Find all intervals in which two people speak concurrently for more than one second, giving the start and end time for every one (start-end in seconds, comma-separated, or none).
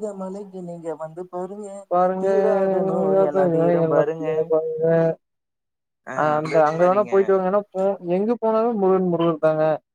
none